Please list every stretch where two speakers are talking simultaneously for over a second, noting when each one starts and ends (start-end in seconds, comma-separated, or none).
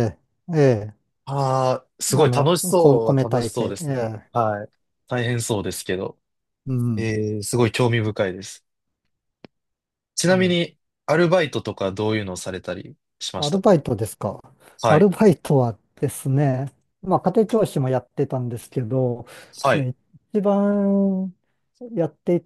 2.2-4.3